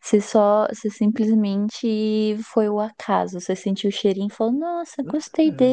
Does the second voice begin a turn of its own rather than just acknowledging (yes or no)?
yes